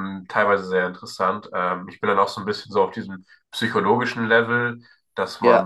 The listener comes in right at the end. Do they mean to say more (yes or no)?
no